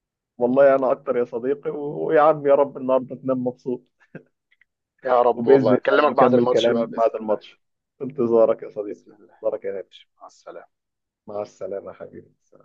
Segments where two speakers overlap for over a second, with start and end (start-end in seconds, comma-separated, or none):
5.3-7.4